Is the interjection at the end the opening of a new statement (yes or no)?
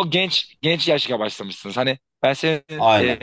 no